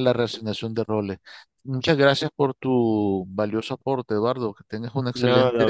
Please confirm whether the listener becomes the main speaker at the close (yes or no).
yes